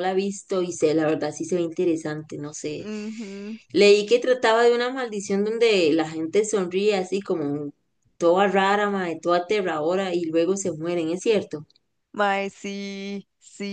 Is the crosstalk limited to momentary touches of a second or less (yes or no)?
yes